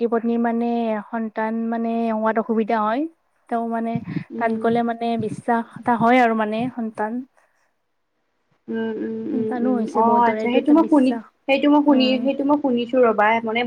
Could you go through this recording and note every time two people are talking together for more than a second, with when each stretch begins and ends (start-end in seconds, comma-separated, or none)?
9.3-11.2